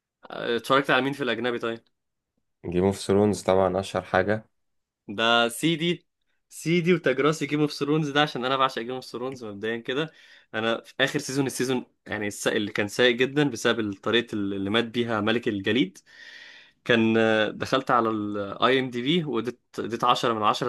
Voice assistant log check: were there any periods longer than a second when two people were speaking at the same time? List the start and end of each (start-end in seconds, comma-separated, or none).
none